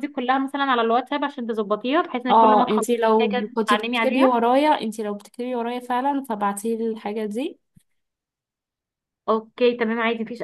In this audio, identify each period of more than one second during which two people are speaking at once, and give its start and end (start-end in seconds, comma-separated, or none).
2.3-4.4